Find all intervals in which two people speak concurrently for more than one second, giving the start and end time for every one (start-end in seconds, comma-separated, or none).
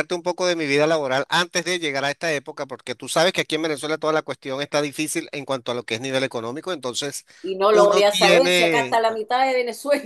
7.7-9.0